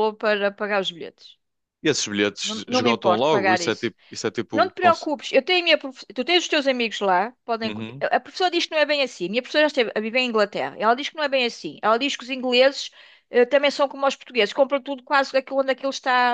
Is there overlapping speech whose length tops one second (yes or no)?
yes